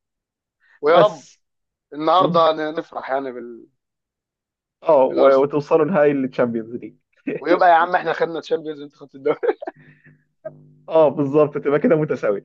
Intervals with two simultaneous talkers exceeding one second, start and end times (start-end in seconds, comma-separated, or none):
none